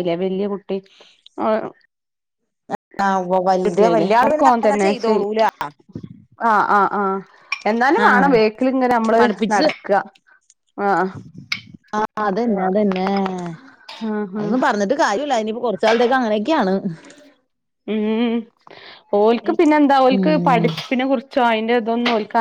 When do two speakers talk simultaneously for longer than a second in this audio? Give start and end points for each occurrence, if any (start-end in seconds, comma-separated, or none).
3.7-5.3